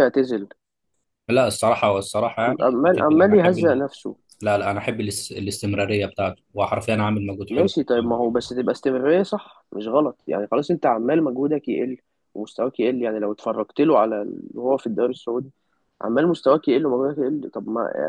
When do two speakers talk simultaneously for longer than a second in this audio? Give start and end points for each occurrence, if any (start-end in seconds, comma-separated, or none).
2.4-3.9